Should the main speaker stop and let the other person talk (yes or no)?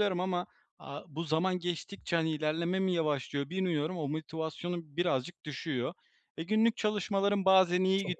no